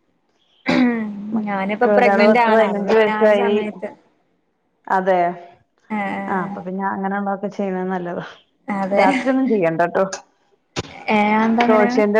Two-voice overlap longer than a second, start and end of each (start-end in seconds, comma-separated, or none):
1.4-3.6